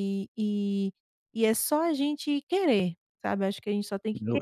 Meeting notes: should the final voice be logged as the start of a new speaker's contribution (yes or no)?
yes